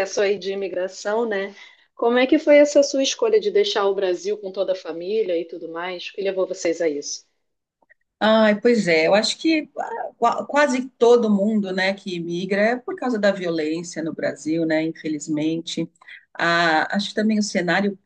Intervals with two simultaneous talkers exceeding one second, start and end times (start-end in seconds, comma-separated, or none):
none